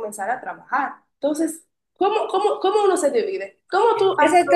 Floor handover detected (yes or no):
yes